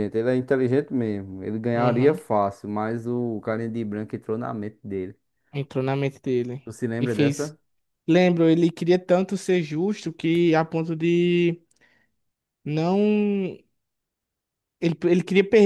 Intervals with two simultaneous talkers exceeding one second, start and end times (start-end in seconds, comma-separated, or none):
none